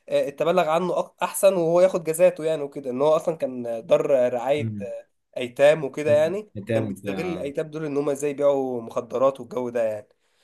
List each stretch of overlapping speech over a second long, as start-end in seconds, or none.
6.0-7.5